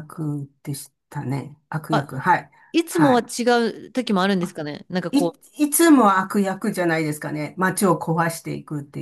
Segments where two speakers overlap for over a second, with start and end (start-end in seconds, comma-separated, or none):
none